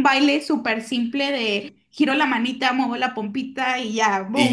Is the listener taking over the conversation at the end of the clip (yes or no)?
yes